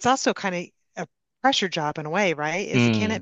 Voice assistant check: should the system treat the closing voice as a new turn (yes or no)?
no